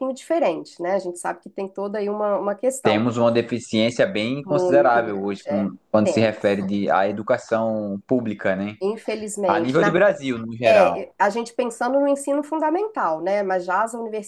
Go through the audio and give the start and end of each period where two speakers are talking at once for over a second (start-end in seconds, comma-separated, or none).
4.4-6.6